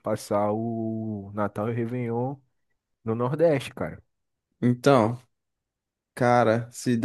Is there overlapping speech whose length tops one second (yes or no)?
no